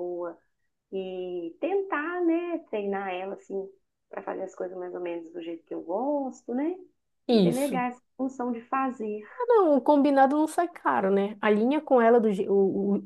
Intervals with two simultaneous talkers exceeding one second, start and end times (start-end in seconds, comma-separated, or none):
none